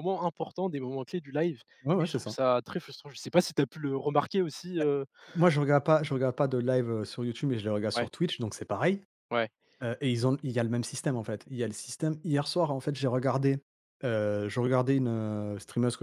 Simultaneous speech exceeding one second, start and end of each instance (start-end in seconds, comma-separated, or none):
none